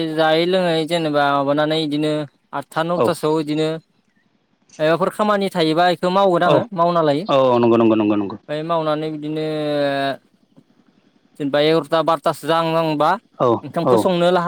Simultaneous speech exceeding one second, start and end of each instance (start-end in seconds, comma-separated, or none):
7.2-8.5